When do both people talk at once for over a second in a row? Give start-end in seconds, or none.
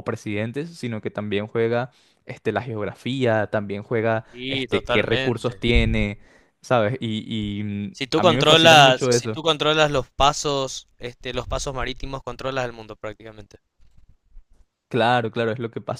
4.3-5.6, 7.9-9.4